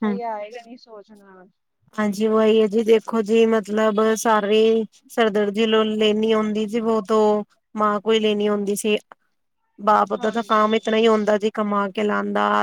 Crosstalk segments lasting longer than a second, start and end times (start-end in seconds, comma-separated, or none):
none